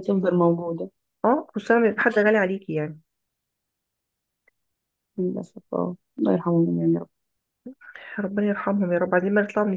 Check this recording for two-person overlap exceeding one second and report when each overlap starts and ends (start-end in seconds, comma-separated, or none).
none